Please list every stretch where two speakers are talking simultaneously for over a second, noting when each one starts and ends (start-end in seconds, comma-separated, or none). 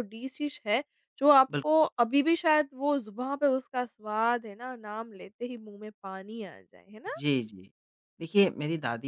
none